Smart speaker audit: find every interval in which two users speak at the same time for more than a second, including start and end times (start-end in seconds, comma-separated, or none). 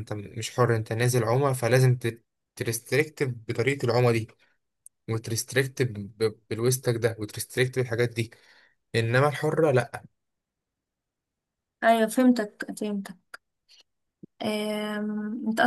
none